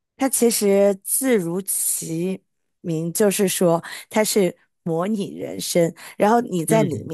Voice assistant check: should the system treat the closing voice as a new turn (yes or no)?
no